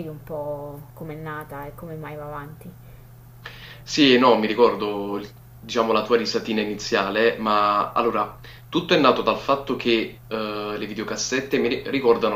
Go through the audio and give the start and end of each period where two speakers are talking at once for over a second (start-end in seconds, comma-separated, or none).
none